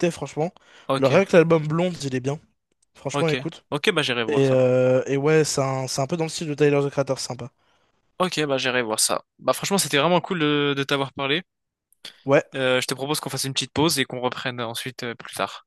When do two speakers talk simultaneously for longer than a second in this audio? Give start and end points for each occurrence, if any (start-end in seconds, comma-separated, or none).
none